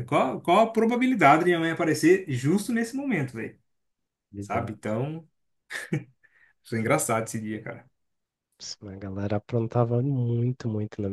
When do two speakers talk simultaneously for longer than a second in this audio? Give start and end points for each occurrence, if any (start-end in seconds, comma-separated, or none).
none